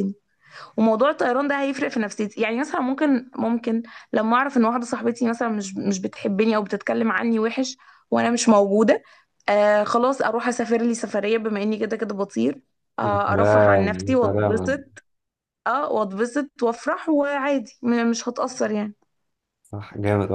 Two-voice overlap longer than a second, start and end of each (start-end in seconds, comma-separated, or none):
13.0-14.8